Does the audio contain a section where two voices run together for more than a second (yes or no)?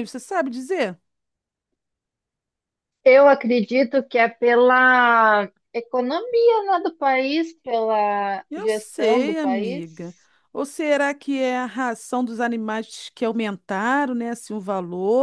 yes